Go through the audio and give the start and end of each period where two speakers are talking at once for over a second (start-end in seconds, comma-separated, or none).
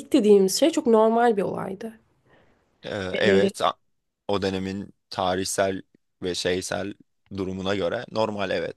none